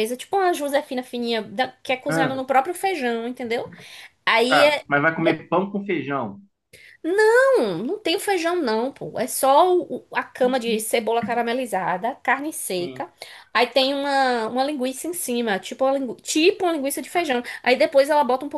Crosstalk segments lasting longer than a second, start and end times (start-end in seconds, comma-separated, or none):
none